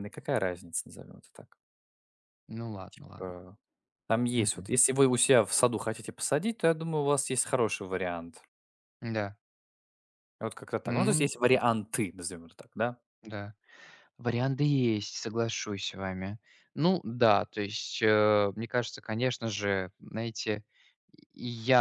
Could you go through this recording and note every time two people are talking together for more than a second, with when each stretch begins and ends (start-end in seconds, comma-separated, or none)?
none